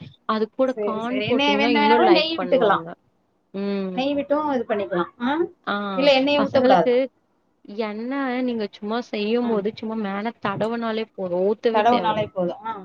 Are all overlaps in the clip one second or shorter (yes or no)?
no